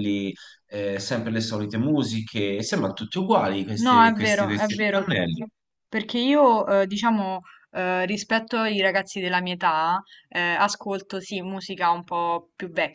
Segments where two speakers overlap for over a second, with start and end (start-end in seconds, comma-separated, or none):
3.8-5.1